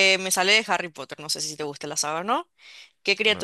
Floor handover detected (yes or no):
no